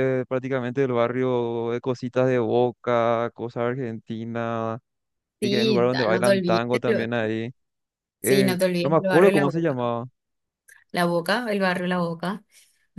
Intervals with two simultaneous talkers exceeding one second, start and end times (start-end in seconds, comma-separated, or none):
5.4-7.2, 8.2-9.8